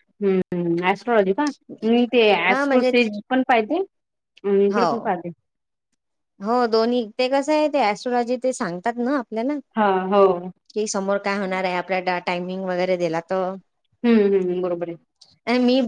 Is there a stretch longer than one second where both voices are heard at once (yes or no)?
no